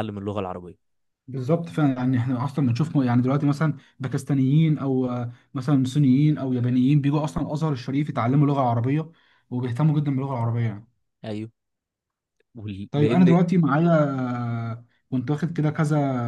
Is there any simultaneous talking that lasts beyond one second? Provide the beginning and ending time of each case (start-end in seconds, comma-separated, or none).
none